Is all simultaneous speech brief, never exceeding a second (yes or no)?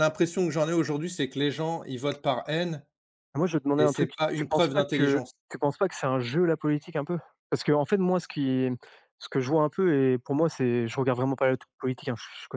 no